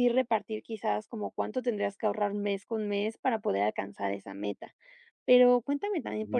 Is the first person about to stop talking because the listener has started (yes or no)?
no